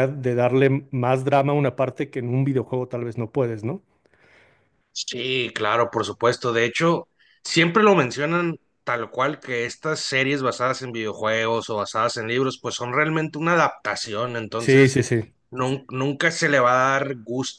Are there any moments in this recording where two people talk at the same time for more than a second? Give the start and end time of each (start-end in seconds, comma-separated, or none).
none